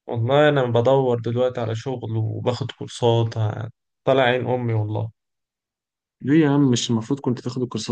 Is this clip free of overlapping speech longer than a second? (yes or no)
yes